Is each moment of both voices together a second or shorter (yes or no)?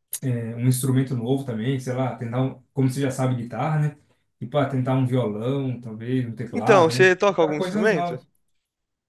no